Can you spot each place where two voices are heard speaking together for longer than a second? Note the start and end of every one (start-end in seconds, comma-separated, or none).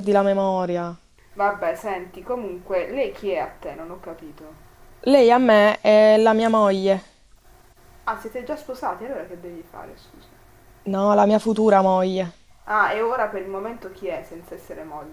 none